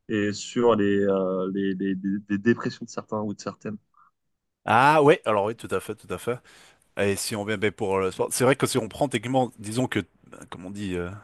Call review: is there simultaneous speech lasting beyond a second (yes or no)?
no